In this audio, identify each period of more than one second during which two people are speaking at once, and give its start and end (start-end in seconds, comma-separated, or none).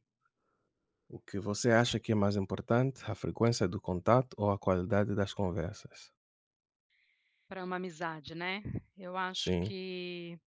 none